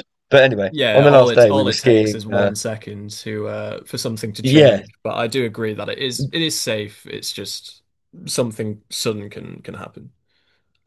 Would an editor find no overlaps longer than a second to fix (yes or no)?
no